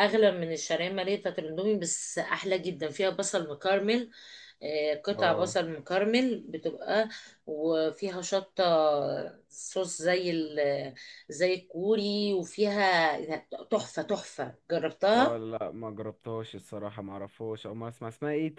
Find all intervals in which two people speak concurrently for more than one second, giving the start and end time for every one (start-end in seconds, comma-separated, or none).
none